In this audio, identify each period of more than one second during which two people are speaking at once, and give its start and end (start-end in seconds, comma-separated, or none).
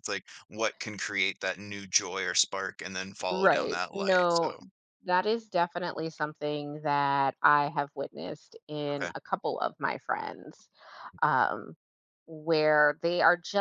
3.3-4.5